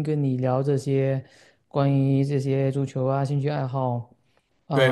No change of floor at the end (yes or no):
no